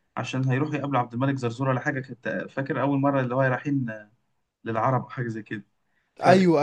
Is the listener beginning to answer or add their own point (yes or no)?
no